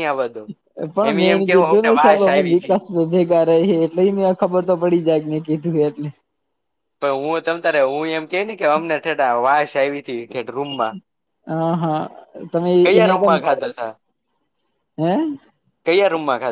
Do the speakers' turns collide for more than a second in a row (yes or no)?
yes